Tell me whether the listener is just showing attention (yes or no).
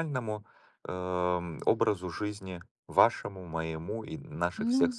yes